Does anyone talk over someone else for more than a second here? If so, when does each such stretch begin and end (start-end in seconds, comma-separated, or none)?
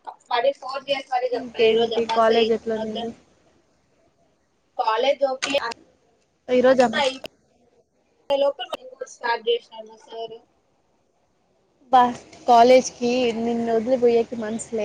1.4-3.1